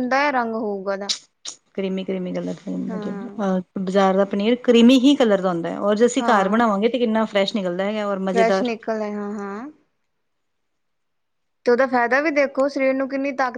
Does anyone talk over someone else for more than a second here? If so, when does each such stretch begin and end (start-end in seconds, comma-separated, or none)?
none